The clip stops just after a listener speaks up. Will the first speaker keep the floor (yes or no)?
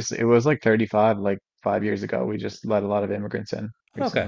no